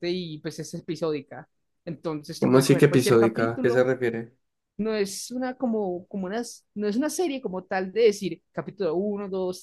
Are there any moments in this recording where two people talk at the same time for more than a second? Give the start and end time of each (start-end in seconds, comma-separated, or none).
2.4-3.9